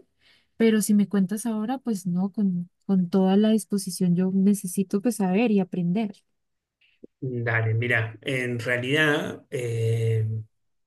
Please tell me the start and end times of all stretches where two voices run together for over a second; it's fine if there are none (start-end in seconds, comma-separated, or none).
none